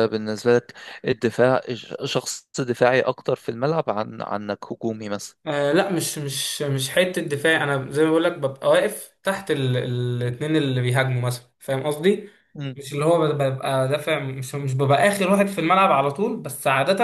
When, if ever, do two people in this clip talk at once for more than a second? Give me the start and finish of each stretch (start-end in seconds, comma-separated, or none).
none